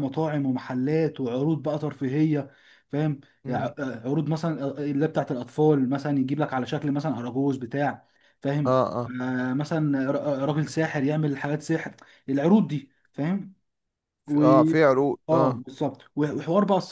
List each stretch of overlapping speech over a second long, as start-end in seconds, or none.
none